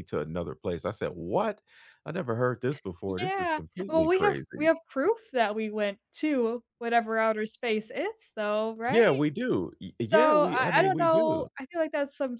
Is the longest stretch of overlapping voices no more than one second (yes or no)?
no